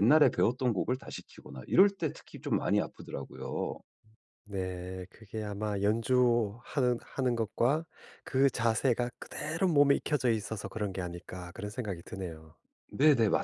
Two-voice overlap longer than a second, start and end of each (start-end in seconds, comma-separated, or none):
none